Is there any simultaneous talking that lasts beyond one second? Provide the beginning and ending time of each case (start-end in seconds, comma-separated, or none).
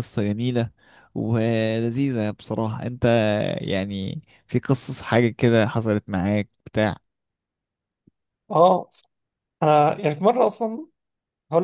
none